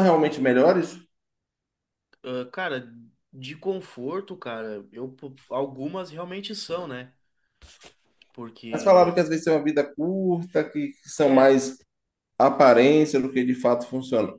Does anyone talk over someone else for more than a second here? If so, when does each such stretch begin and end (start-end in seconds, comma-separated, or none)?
none